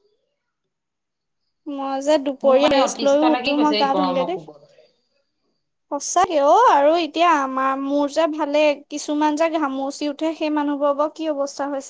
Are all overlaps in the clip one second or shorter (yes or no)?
no